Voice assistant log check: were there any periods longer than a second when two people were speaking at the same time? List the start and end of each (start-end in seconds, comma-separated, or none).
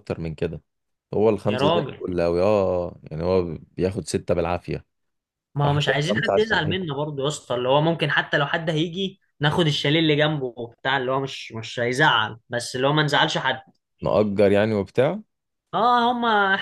5.6-7.0